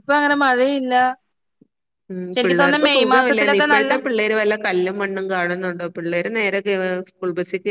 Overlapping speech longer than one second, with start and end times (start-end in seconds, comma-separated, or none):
2.4-3.9